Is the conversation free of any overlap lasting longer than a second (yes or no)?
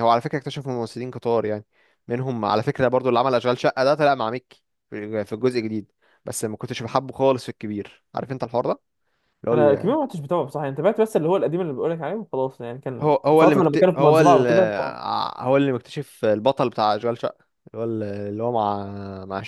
no